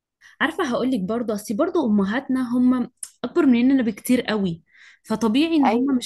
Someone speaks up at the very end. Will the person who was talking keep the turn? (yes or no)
yes